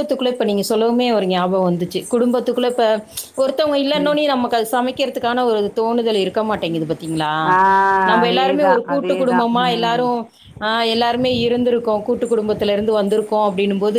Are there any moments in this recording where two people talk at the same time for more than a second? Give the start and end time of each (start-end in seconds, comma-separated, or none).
8.2-10.0